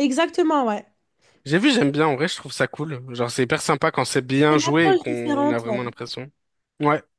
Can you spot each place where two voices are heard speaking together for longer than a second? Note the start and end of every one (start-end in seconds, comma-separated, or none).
4.5-5.8